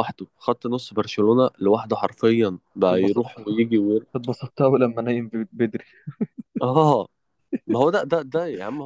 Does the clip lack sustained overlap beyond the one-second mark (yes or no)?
yes